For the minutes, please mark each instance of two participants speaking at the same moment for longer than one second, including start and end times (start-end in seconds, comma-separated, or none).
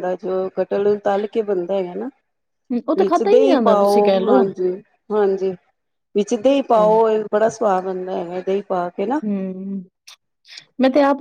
3.0-4.4